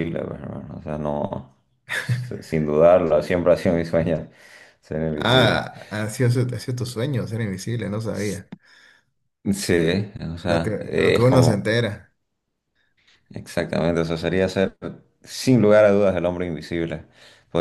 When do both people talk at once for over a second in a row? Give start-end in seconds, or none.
10.4-11.8